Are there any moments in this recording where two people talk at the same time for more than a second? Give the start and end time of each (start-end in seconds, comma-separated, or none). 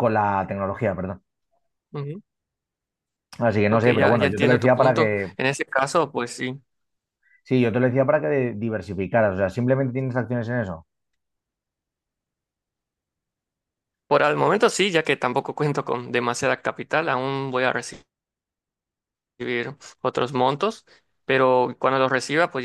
3.7-5.4